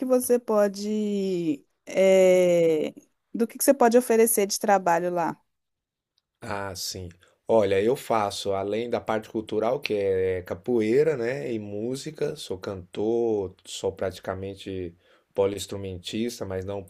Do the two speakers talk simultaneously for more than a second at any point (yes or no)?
no